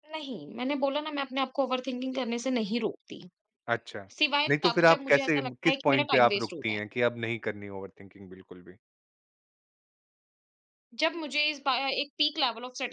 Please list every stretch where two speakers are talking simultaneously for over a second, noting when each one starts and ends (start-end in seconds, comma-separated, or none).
4.5-6.8